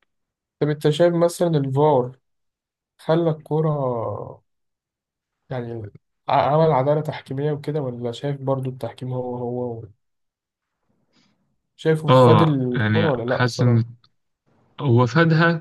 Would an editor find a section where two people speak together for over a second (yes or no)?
yes